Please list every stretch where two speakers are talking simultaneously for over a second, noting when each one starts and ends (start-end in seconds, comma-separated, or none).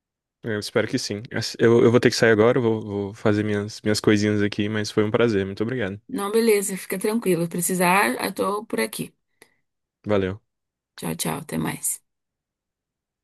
none